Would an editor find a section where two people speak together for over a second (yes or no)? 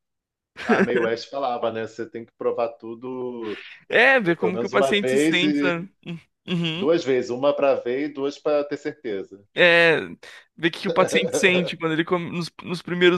yes